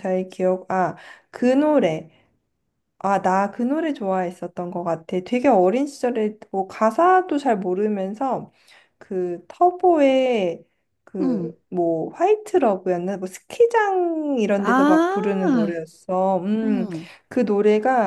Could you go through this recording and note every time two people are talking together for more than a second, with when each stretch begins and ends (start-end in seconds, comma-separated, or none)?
14.6-15.8